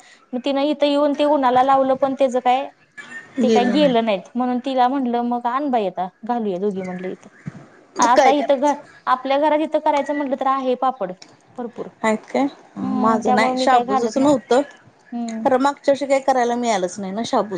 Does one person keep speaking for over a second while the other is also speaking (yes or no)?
yes